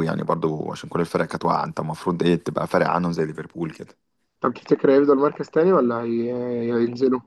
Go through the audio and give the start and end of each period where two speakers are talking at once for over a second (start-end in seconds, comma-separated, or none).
none